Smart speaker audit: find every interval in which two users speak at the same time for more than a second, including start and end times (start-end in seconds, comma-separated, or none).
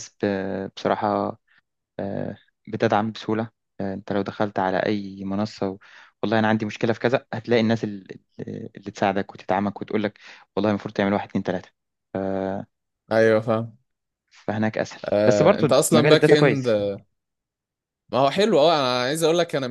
15.0-16.7